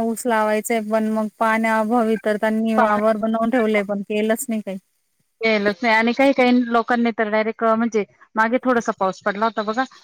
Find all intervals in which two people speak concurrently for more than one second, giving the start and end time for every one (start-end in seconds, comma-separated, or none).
none